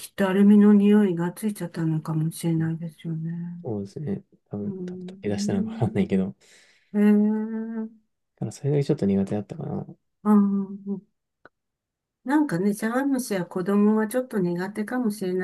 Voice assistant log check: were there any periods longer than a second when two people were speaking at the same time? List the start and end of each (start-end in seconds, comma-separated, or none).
4.6-5.8